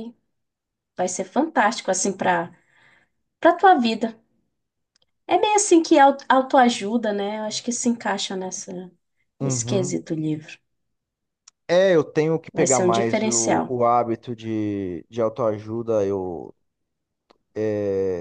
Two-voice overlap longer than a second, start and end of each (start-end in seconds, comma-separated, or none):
12.5-13.8